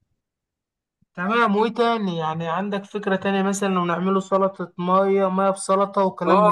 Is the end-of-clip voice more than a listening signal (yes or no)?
yes